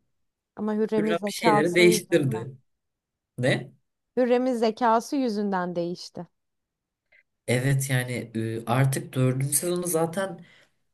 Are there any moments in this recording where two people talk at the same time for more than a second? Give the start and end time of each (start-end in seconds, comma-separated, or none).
1.0-2.5